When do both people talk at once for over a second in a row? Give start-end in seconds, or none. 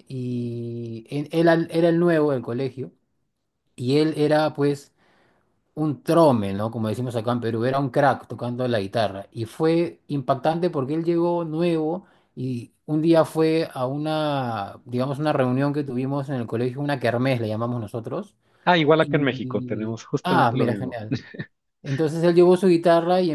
19.0-21.0